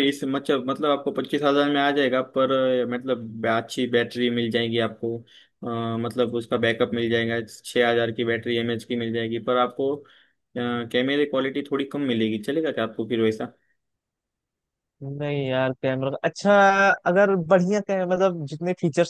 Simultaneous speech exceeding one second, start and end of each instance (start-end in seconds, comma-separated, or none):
none